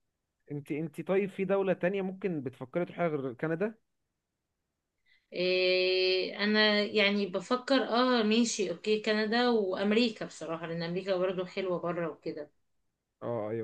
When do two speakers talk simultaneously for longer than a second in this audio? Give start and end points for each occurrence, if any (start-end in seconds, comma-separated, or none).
none